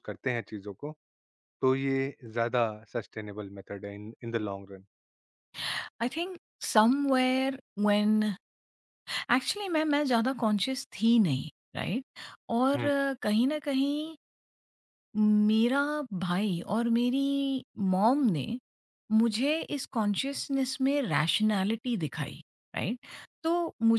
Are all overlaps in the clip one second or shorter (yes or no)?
yes